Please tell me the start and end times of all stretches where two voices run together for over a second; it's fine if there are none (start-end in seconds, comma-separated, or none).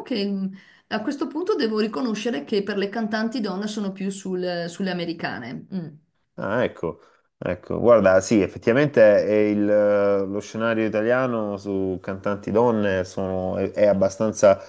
none